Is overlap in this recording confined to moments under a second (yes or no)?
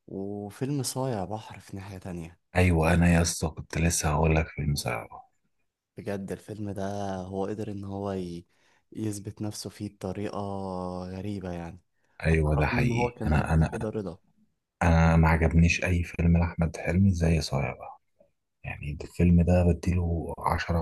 no